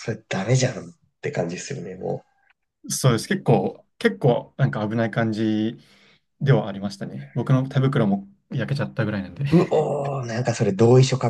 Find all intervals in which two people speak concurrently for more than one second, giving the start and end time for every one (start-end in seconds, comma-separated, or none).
none